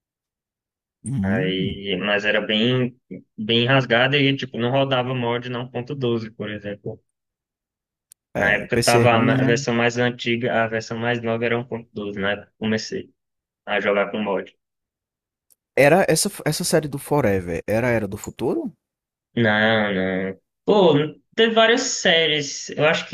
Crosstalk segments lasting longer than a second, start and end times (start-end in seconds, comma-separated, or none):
8.4-9.6